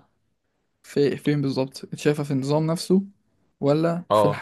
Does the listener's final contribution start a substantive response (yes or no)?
no